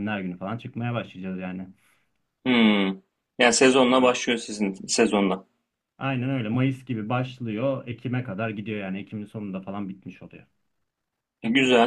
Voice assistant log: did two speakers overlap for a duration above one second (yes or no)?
no